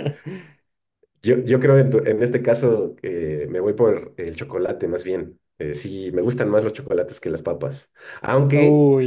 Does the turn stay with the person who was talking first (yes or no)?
yes